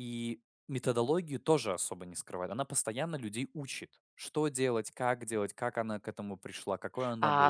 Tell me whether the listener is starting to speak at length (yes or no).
yes